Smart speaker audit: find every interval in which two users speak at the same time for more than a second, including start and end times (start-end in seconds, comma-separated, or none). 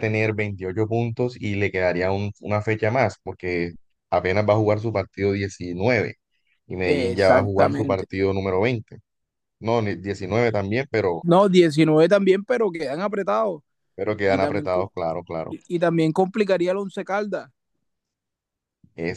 6.8-8.0